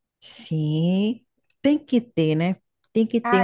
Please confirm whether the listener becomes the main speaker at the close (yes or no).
no